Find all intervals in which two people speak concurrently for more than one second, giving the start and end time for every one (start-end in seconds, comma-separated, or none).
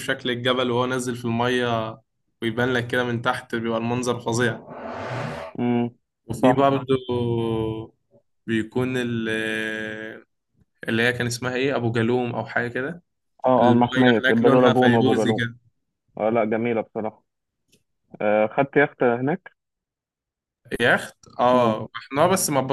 13.6-15.4